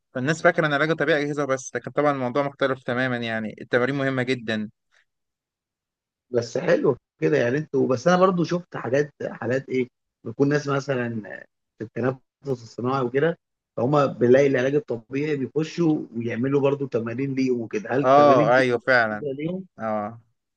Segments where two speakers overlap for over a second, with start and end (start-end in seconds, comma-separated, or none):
18.0-19.2